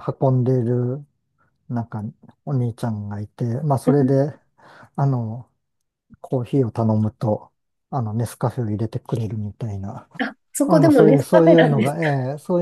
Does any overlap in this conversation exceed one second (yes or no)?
yes